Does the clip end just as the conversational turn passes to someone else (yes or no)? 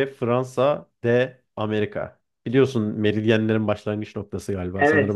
yes